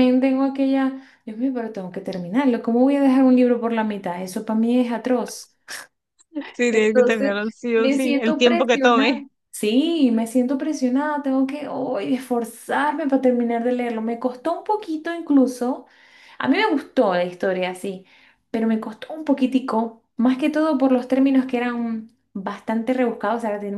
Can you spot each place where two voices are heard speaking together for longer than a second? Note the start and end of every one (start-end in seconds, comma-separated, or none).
6.7-9.2